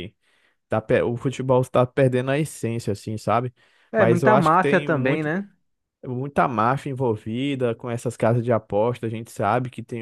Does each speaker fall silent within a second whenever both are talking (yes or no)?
no